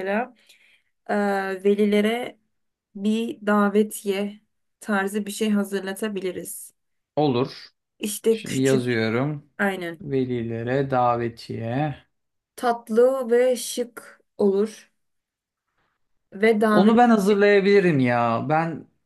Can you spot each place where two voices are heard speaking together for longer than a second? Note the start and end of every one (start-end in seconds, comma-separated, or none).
none